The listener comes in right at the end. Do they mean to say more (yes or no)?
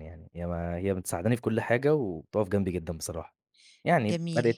yes